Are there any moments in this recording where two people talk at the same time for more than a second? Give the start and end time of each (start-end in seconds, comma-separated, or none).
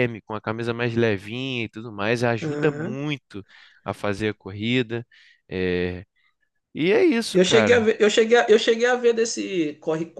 none